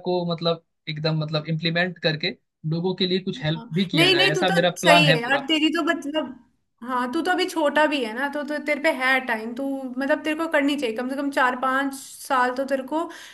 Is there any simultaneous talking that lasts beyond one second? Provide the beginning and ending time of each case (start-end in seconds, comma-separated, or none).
3.6-5.5